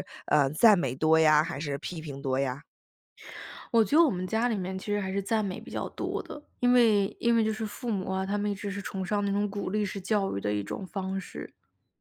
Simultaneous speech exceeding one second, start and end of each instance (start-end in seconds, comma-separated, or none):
none